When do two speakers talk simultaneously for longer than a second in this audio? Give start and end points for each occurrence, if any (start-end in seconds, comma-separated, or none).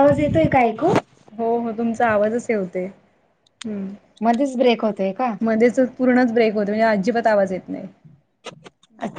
none